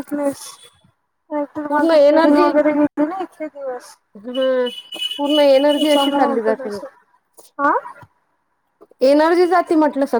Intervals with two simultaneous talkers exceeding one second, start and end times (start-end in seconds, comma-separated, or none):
none